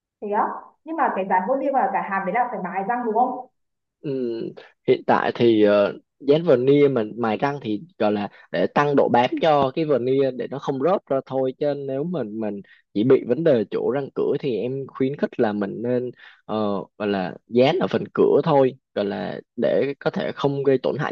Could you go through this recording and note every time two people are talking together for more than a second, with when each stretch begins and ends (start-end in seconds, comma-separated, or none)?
none